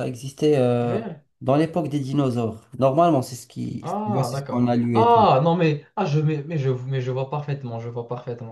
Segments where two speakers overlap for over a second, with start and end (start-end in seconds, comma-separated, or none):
3.8-5.3